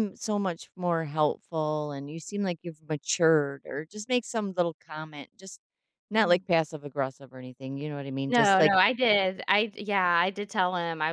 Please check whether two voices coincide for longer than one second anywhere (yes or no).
no